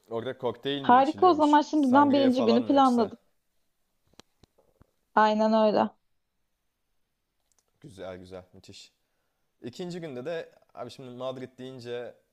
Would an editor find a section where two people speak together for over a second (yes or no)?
yes